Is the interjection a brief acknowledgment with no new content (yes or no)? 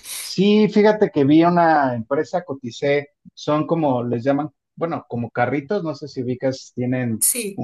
yes